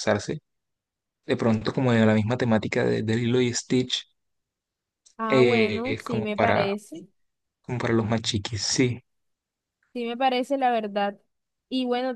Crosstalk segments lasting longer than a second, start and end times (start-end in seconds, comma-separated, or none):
5.3-6.7